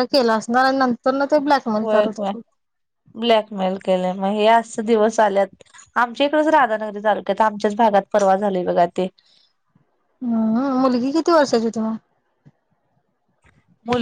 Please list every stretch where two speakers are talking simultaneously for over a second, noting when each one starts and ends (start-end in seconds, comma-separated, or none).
none